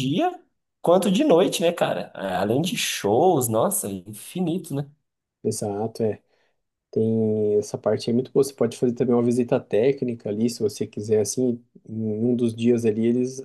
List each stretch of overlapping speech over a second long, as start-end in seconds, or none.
none